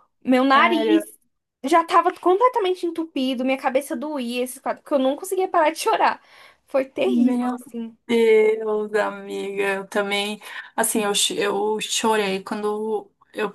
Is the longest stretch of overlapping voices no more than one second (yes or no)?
yes